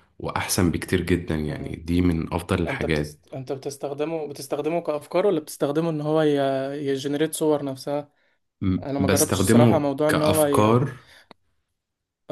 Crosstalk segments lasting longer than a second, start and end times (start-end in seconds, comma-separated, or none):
8.8-10.8